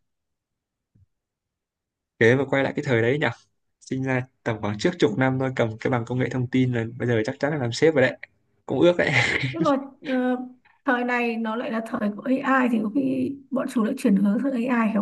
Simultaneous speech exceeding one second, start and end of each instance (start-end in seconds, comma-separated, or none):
none